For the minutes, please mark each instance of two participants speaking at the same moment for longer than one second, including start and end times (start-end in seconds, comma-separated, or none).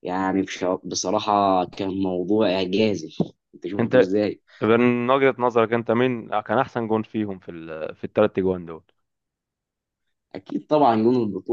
none